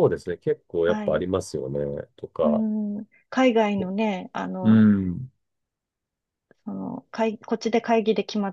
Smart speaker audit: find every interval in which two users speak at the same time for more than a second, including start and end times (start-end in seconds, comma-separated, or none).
none